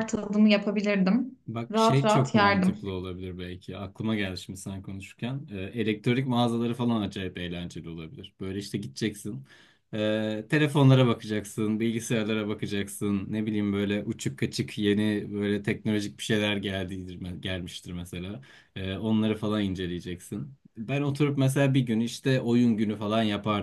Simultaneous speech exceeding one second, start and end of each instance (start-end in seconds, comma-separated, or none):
1.5-2.8